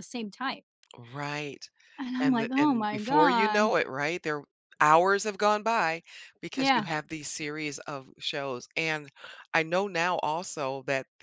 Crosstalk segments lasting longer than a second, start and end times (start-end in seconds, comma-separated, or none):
2.2-3.6